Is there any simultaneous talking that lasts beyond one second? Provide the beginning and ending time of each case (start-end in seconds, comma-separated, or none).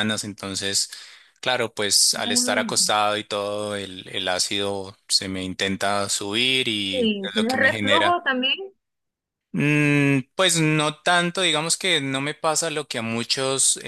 6.9-8.2